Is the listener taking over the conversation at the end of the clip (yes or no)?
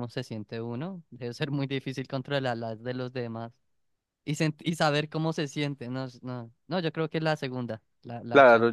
yes